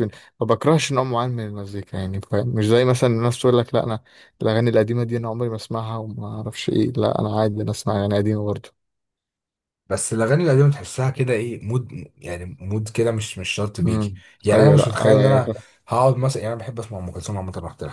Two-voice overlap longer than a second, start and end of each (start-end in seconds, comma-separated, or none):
13.8-15.5